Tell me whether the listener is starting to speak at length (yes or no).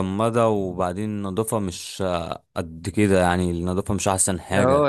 yes